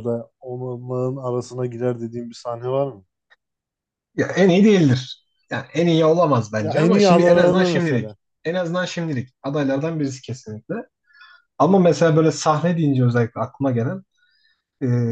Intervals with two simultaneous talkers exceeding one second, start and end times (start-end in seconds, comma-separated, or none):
6.6-8.2